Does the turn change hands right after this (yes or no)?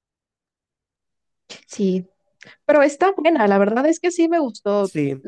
yes